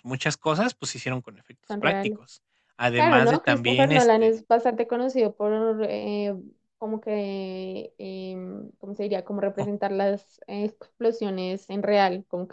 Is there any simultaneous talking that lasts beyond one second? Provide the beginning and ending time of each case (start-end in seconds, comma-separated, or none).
2.9-4.4